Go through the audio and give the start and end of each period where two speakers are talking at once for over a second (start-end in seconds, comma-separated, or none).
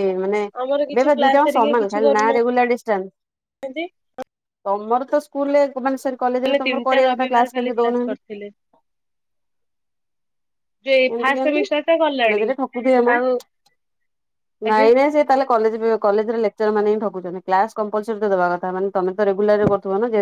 0.6-2.5, 6.5-8.2